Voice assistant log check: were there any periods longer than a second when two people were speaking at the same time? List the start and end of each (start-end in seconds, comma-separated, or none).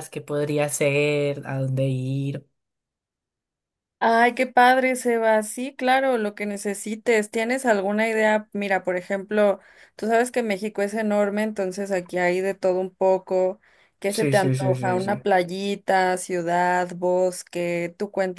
14.1-15.3